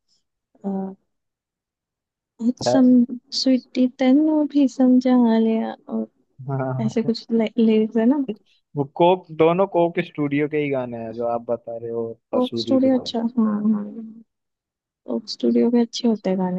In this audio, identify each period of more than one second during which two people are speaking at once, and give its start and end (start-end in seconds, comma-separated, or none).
none